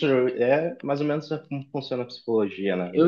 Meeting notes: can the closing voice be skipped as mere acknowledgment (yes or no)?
no